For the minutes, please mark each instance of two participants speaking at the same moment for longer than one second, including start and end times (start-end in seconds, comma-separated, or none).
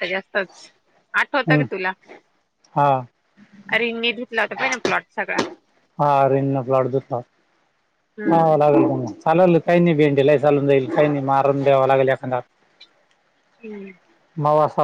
none